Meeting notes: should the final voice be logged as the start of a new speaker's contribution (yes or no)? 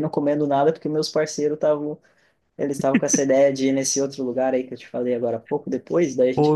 yes